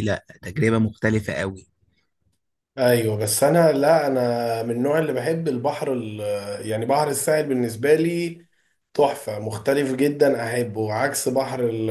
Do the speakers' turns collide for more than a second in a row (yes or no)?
no